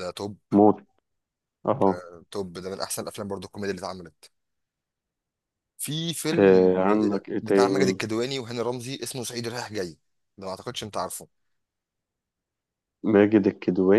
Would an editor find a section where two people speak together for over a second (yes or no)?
no